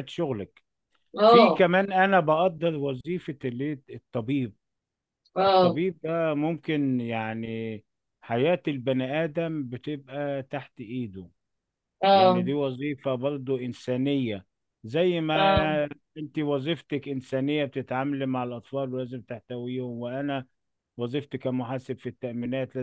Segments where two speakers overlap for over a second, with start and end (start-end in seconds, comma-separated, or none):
none